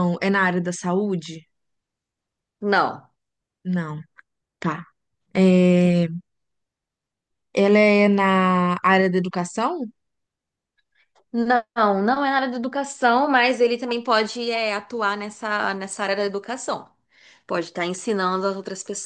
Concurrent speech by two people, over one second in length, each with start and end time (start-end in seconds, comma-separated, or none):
none